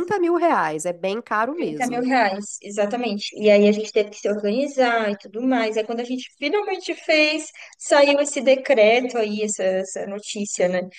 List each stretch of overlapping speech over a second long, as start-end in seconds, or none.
none